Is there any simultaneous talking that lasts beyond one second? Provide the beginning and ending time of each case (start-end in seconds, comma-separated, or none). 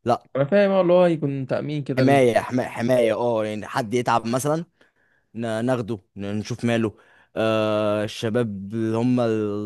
none